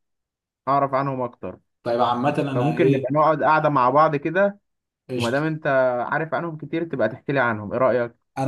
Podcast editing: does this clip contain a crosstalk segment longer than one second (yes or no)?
no